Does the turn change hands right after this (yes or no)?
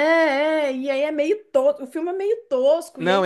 yes